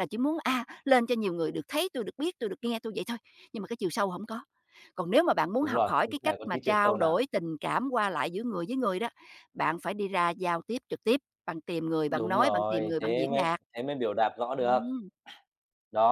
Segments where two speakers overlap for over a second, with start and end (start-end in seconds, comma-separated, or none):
5.6-7.2, 12.1-13.6